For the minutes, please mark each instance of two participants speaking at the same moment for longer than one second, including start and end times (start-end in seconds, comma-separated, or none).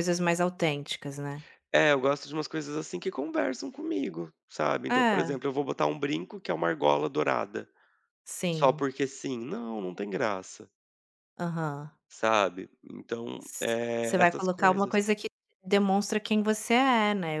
13.4-15.0